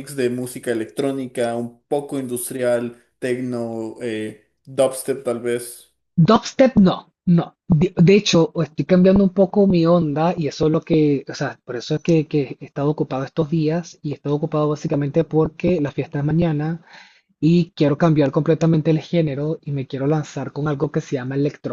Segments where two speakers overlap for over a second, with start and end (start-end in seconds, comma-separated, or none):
none